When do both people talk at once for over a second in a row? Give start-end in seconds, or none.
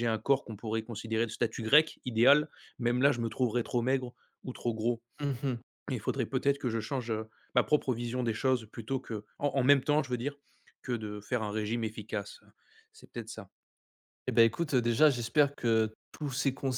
none